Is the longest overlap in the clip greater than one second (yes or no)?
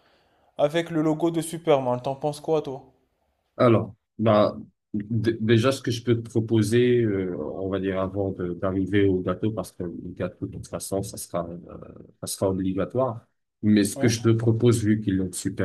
no